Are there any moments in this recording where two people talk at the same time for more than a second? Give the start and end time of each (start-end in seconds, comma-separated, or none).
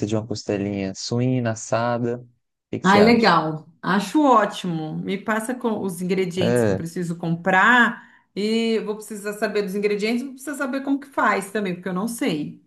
none